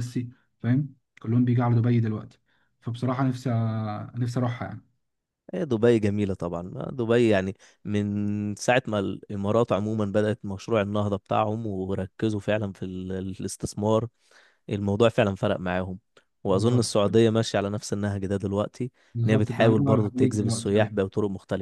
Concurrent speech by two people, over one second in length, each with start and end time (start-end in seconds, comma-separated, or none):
19.1-21.0